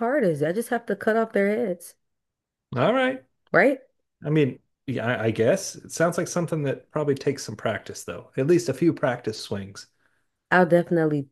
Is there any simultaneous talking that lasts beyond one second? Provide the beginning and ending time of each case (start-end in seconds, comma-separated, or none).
none